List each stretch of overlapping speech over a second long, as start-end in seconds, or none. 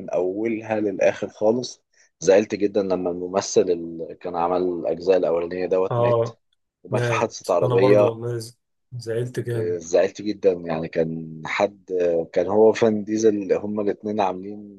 6.9-8.2